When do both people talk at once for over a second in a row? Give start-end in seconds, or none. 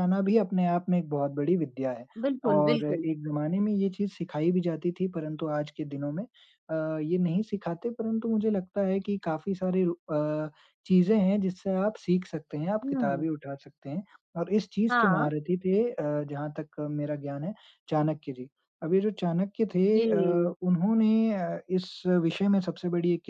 none